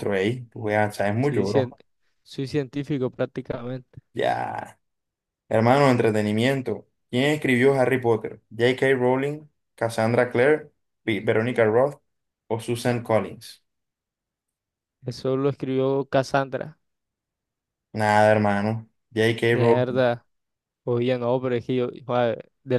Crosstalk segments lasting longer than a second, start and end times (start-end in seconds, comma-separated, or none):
none